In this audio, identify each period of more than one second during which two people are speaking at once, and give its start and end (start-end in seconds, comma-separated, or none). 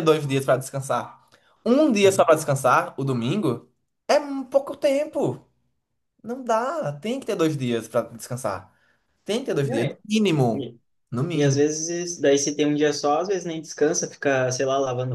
none